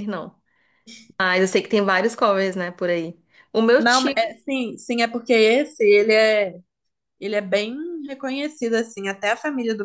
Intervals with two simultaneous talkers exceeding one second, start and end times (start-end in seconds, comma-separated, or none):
none